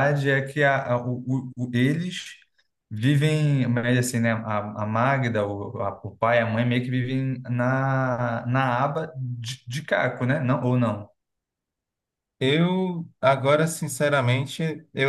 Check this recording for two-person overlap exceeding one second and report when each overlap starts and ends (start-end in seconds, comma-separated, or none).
none